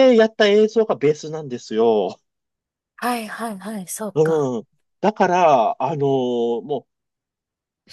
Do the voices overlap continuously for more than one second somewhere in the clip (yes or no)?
no